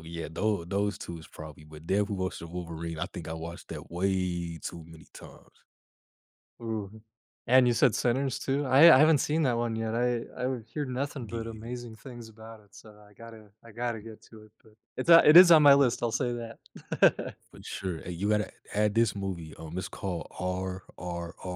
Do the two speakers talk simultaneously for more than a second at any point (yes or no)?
no